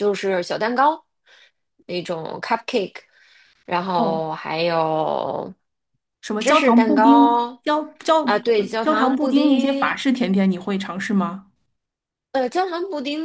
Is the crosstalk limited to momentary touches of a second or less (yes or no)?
no